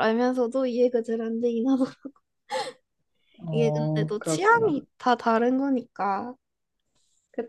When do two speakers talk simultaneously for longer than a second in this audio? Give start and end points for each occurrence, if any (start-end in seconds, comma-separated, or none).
3.5-4.8